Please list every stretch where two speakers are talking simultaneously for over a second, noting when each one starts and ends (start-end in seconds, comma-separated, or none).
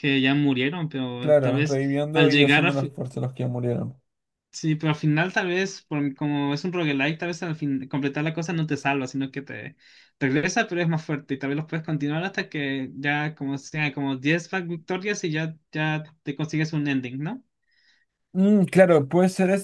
1.2-2.9